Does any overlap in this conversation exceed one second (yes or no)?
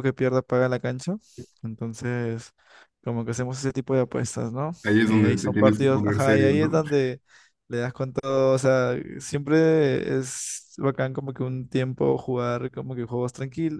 yes